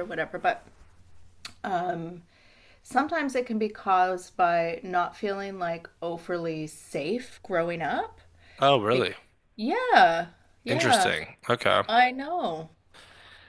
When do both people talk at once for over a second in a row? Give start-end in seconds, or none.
none